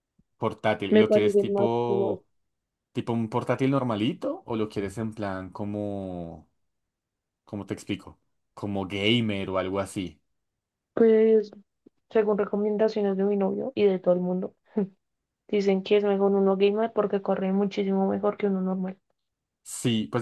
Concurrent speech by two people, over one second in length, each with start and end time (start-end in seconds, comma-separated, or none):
0.9-2.2